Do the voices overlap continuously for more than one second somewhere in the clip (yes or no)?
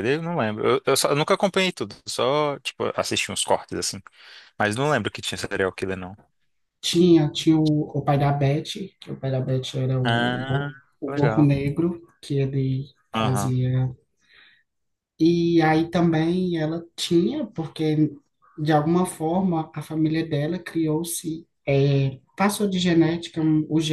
yes